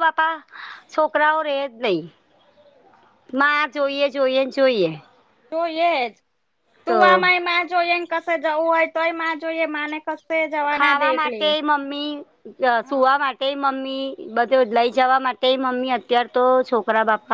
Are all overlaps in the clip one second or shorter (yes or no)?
yes